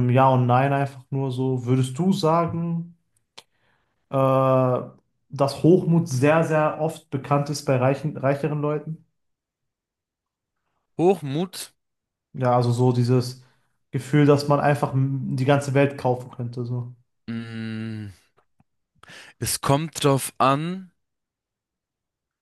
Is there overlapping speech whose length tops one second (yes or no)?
no